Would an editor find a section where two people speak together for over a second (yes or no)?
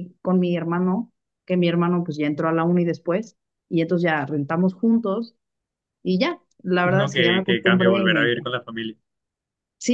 yes